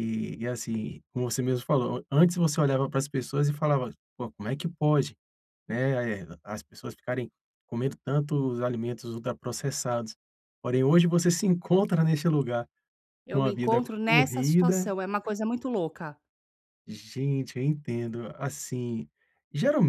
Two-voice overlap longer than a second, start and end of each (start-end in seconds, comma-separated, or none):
13.3-14.9